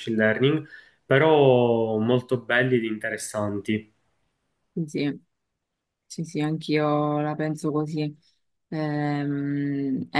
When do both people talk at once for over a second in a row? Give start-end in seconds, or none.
none